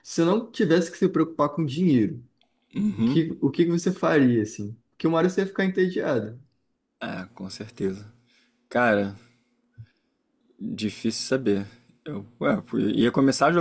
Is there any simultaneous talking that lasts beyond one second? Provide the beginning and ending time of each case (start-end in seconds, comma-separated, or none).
none